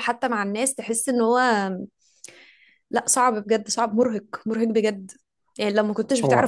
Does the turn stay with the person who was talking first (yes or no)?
yes